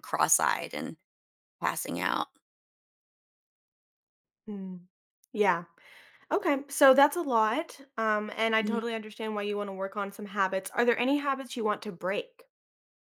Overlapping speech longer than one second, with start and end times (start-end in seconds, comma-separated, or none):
none